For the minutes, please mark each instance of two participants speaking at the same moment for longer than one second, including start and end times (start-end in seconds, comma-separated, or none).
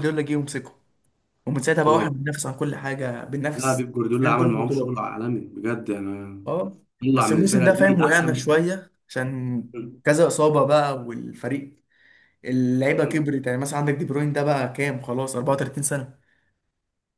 3.5-5.0, 7.0-8.4